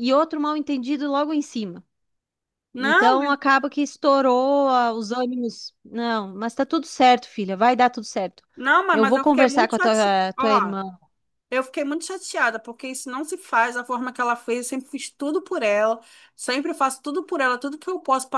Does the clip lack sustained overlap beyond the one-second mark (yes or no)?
no